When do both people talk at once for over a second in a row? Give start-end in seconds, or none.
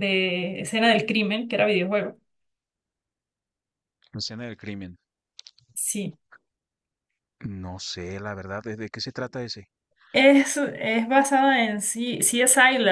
none